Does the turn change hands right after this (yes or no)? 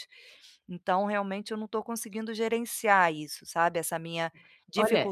yes